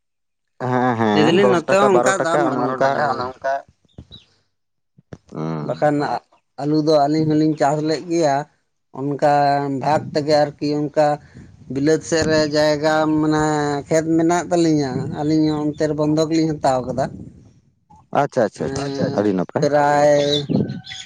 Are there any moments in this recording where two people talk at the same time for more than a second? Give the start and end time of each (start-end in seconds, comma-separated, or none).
1.2-2.9